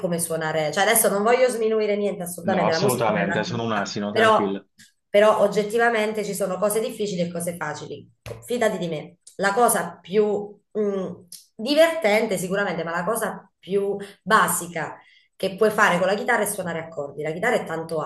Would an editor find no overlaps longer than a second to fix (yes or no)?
no